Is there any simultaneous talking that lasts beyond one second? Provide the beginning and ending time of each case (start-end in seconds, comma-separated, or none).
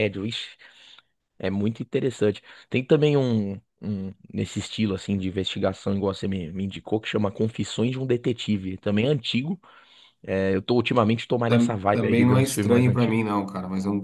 11.5-13.2